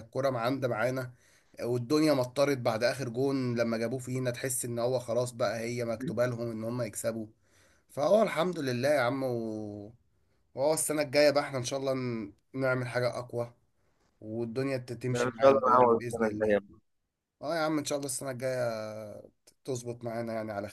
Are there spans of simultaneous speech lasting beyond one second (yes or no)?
yes